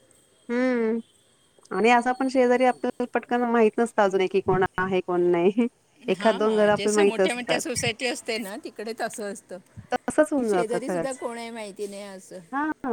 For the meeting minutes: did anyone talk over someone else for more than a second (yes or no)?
no